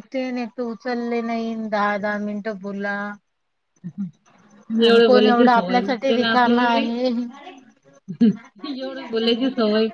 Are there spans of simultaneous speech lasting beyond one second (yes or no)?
yes